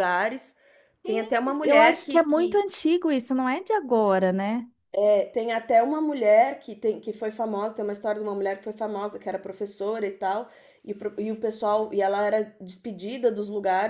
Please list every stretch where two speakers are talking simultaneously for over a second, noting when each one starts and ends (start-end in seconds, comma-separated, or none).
1.1-2.6